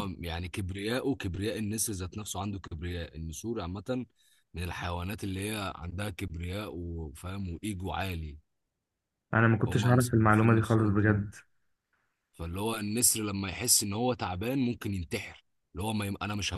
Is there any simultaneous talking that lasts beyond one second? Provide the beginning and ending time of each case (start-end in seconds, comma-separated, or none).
9.7-11.2